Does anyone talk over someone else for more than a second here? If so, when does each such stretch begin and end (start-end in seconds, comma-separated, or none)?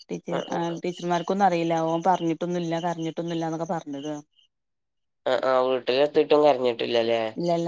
none